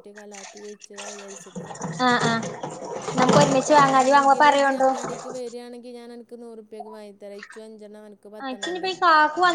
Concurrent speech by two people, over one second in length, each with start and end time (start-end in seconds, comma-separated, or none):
3.2-4.9